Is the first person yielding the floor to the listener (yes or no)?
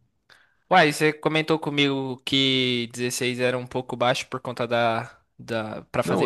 yes